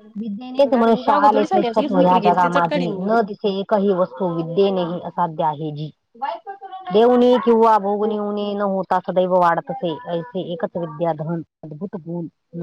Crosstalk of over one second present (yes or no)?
yes